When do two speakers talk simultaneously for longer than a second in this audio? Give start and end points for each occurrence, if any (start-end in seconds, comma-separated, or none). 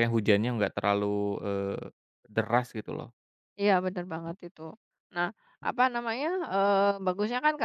none